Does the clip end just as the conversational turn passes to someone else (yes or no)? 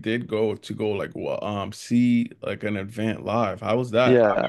yes